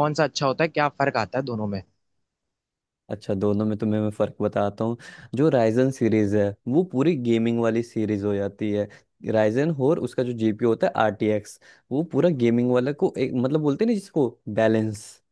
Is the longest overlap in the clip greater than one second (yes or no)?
no